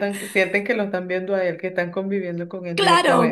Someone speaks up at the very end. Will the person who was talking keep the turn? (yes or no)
no